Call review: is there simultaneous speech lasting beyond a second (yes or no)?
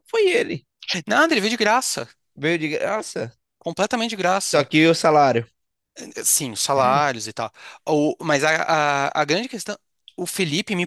no